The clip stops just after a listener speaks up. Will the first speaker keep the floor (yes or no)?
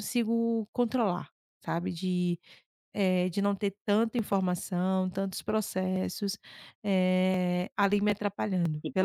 no